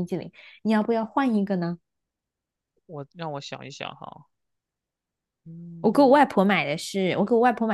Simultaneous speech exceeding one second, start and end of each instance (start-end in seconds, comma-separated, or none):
none